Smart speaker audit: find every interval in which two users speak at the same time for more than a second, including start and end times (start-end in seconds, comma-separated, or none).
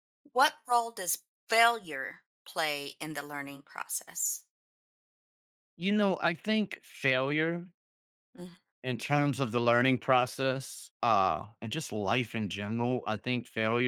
none